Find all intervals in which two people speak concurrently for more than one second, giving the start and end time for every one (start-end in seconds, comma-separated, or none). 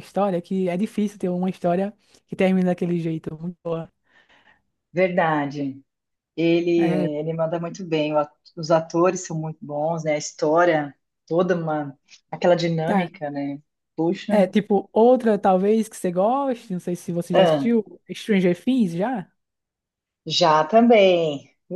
none